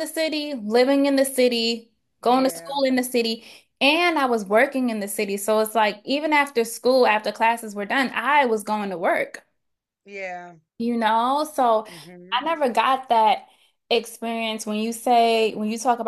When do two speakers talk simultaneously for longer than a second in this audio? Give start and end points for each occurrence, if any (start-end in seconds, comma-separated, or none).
none